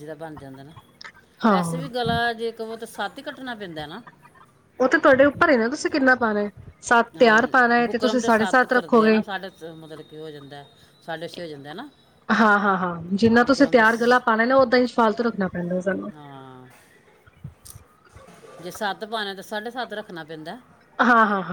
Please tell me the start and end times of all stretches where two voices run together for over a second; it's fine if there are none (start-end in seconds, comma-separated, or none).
none